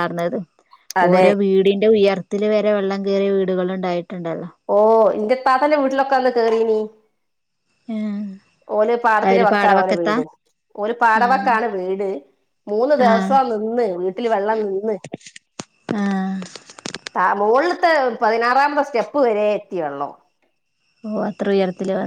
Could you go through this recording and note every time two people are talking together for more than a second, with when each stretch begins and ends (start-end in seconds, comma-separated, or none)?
none